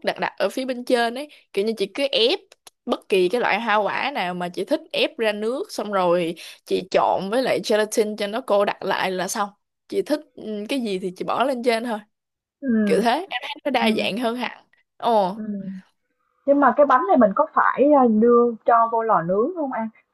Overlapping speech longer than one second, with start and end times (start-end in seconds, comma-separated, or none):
none